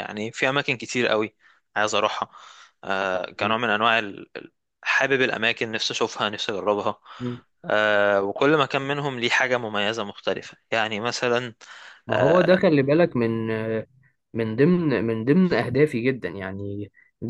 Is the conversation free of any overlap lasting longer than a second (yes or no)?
yes